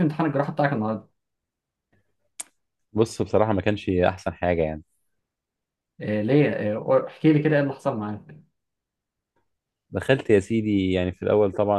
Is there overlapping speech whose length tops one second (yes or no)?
no